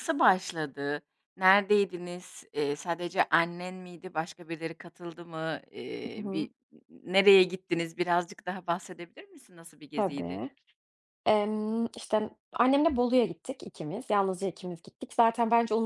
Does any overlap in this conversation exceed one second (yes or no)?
no